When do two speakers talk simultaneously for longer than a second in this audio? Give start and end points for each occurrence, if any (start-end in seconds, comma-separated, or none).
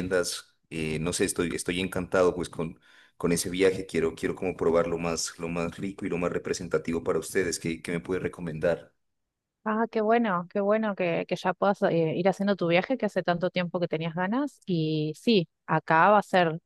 none